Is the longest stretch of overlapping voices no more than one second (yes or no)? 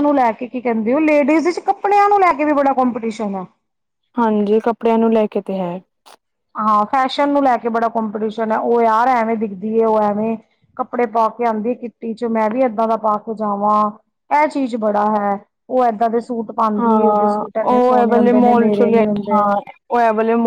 no